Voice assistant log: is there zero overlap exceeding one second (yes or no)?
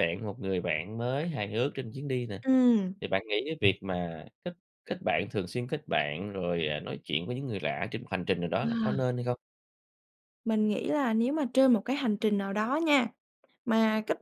yes